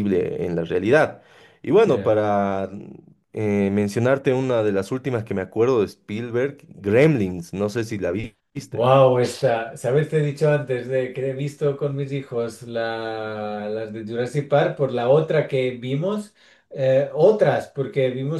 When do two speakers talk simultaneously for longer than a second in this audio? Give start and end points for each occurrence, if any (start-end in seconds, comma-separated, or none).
none